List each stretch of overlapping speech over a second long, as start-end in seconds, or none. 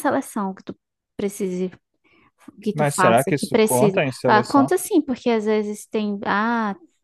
2.7-4.7